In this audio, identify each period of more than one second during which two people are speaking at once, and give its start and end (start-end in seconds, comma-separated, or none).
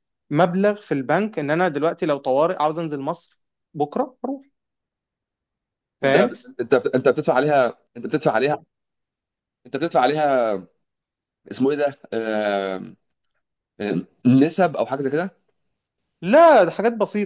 none